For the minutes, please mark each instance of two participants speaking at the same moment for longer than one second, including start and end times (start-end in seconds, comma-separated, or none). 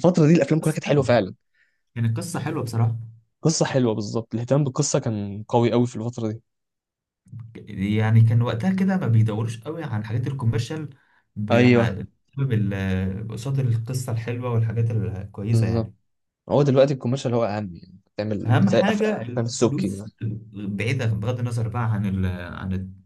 18.4-20.1